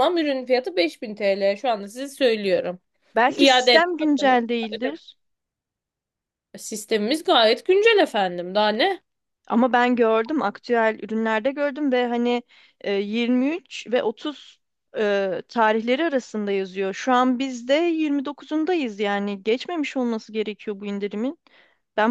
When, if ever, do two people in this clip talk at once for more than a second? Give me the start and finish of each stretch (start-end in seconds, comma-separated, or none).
3.3-5.0